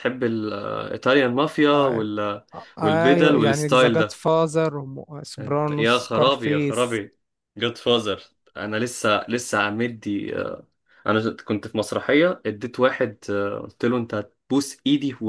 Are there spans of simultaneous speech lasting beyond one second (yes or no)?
yes